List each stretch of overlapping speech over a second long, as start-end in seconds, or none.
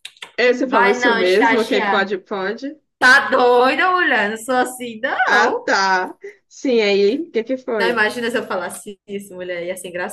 0.7-2.1